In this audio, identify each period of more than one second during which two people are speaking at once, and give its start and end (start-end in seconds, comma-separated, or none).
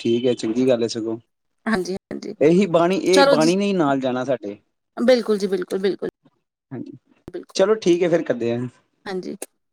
none